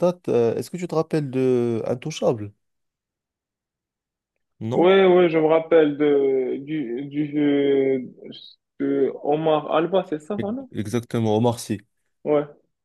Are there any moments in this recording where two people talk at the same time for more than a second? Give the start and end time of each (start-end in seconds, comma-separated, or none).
none